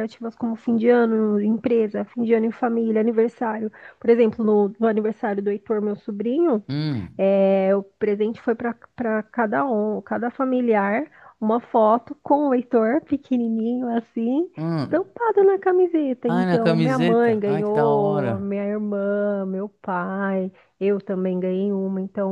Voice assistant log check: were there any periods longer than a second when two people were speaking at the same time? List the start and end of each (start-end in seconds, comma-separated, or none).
16.2-18.5